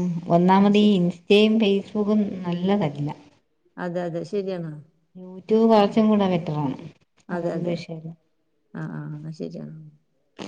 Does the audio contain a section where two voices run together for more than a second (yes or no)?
no